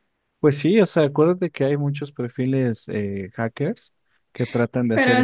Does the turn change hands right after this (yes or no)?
yes